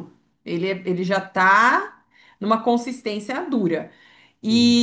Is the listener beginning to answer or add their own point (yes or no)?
no